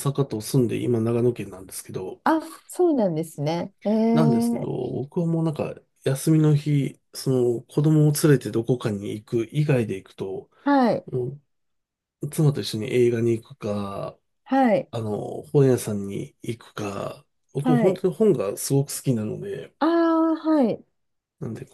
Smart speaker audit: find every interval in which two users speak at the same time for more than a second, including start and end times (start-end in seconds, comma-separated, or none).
none